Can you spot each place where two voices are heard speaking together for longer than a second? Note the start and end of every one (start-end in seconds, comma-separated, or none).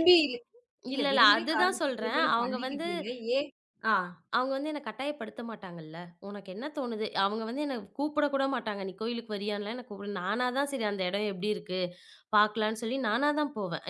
0.9-2.9